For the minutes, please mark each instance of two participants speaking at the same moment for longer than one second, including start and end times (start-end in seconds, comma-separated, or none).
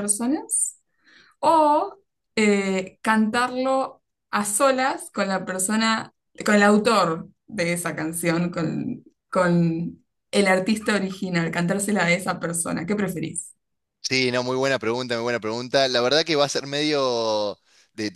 none